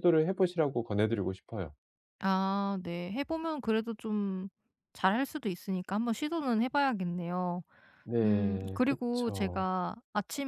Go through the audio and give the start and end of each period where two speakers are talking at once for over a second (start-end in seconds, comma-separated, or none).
8.2-9.7